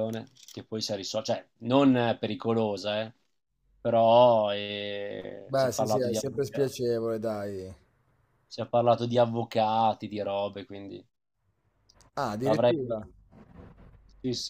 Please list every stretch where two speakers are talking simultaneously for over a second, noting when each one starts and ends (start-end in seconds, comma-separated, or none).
5.5-6.7